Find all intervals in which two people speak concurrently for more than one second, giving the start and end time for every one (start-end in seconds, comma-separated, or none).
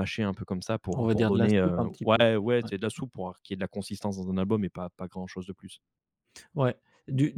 0.9-2.2